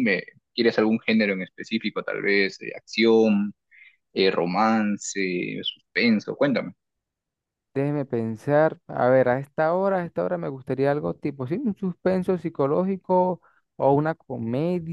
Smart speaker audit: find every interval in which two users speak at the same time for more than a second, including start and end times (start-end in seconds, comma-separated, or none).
none